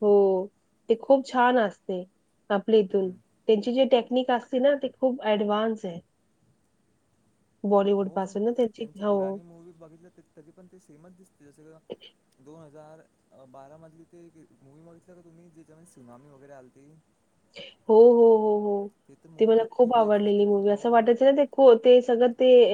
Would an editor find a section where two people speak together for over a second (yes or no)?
yes